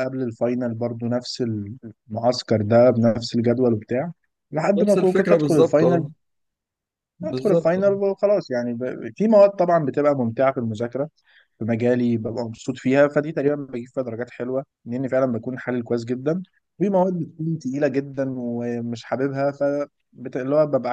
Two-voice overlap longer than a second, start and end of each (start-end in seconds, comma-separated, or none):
4.8-6.0